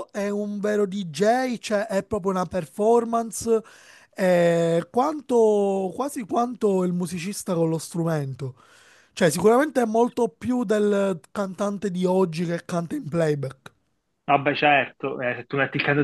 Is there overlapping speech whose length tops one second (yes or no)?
no